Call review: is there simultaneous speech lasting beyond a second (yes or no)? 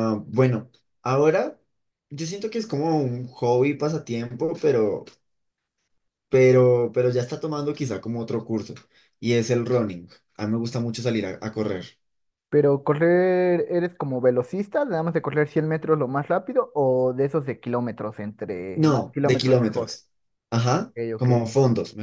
yes